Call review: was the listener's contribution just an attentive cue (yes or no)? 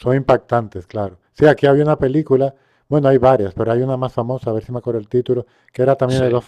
yes